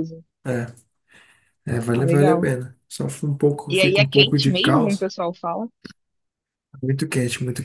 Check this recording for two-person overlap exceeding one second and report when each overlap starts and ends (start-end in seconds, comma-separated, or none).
3.7-5.1